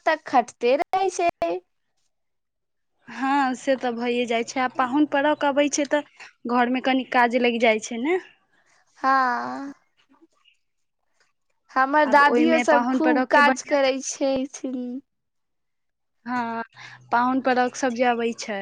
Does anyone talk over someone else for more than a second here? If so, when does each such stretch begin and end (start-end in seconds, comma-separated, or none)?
12.1-13.9